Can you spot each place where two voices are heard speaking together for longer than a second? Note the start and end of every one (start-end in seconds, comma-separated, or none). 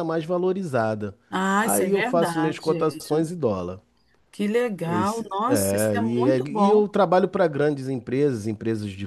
1.6-3.0, 4.8-6.8